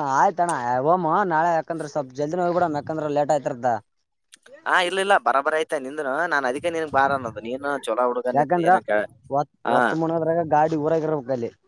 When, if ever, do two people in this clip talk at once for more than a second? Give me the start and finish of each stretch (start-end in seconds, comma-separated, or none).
none